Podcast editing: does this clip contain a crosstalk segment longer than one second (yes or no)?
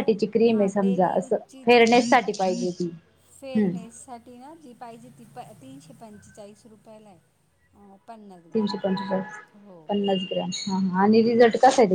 yes